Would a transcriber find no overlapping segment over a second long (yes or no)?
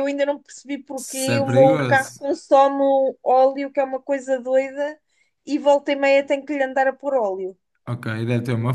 no